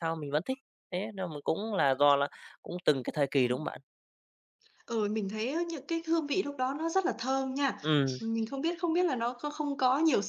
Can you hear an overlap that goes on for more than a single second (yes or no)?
no